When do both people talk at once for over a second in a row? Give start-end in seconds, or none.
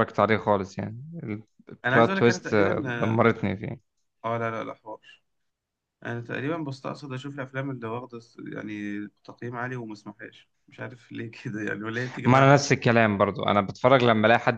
1.8-3.3